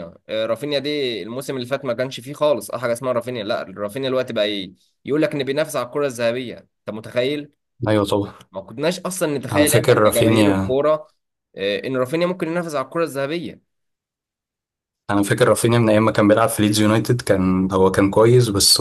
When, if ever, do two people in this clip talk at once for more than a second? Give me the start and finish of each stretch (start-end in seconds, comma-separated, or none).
9.5-10.8